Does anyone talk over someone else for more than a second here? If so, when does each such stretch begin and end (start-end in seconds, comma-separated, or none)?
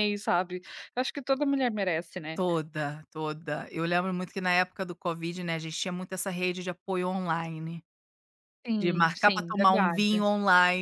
8.8-10.2